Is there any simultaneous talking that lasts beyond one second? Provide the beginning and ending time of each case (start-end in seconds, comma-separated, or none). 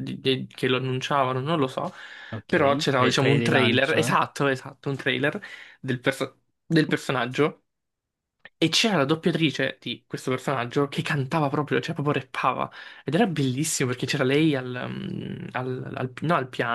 2.5-4.1